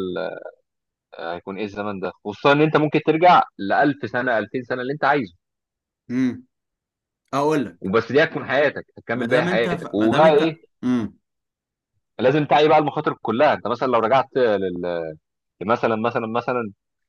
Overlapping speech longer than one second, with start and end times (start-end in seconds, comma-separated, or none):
9.2-10.6